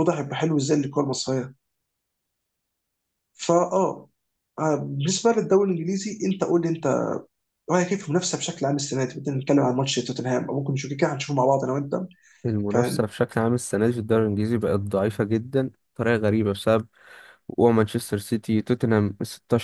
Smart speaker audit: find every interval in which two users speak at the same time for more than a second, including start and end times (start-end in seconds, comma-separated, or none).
none